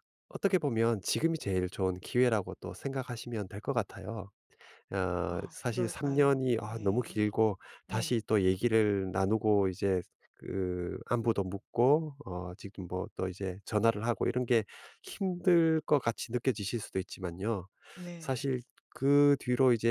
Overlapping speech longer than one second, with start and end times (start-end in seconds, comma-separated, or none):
5.3-7.2